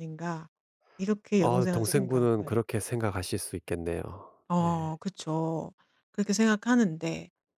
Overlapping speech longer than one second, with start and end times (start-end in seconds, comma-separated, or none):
1.4-2.6